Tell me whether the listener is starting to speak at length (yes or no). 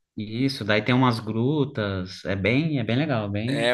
yes